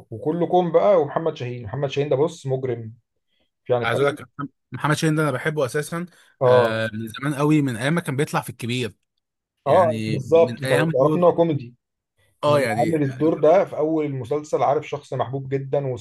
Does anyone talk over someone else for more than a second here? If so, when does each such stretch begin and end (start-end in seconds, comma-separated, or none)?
9.7-11.3